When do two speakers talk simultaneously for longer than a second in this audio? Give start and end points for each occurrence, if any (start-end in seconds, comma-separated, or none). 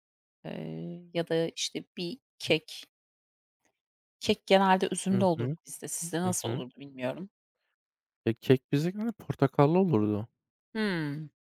none